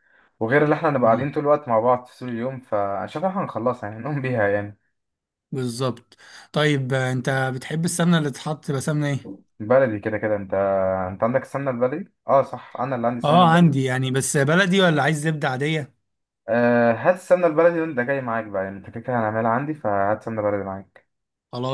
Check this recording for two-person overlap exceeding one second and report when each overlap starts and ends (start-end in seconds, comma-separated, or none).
none